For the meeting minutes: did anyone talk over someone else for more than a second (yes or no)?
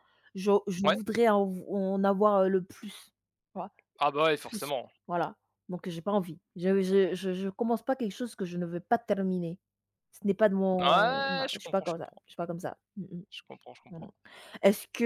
yes